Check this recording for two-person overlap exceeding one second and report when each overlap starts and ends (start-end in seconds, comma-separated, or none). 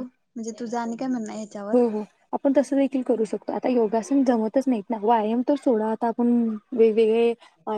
none